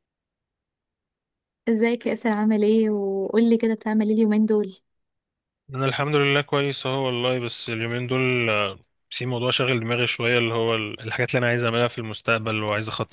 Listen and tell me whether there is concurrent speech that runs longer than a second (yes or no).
no